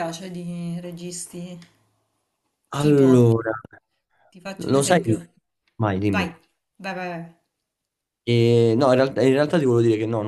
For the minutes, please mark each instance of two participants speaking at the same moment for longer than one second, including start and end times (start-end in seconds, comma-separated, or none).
none